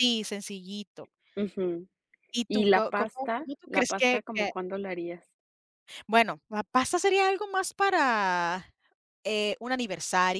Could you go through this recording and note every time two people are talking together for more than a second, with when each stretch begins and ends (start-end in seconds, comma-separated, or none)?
2.5-4.5